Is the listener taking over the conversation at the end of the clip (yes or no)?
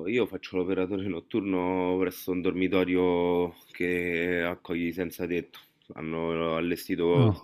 no